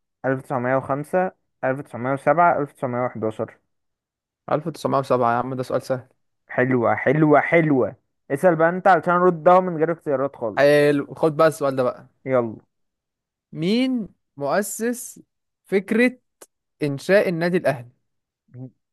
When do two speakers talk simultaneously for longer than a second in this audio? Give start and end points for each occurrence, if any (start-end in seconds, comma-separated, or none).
none